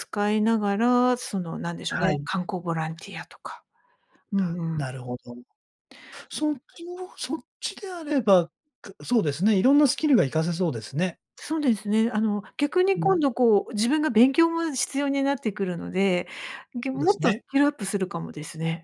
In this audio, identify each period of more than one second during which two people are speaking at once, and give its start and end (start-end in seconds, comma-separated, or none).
none